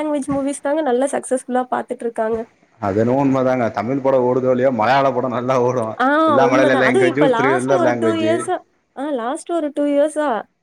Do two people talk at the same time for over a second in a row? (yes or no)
yes